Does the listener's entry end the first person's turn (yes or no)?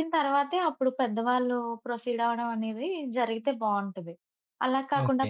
no